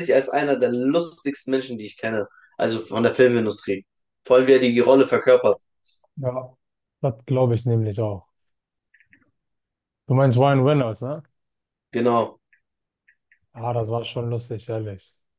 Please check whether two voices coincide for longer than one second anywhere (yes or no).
no